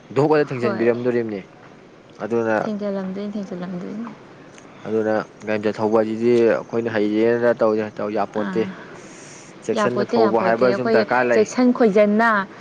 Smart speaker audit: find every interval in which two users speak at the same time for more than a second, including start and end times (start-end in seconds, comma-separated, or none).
none